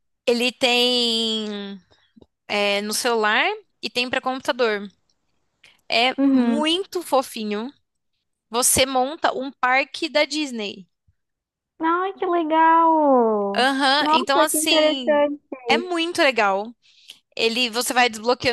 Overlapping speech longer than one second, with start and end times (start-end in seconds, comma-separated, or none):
13.6-15.2